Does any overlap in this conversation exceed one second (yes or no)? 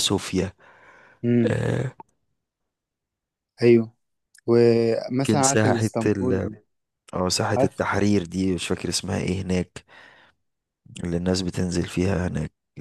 yes